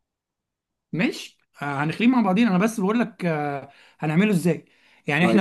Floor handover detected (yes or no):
no